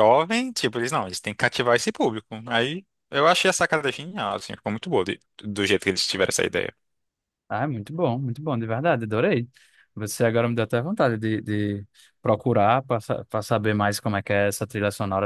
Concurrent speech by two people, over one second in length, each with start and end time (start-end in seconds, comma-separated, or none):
none